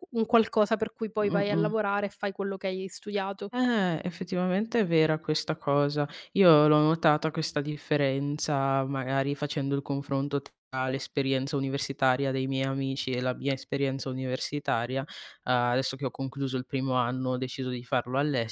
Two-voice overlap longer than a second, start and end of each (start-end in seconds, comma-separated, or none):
none